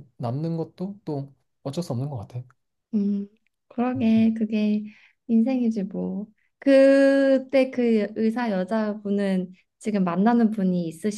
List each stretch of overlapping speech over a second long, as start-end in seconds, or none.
none